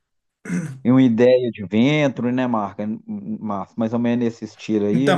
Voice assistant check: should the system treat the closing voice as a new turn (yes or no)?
yes